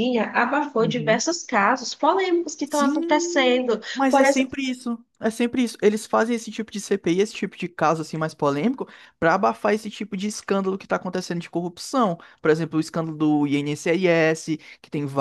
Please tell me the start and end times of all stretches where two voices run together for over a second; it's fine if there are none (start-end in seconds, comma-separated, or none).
2.6-4.5